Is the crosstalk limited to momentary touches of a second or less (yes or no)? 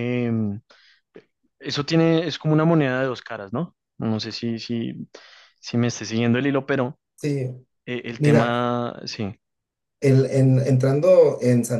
yes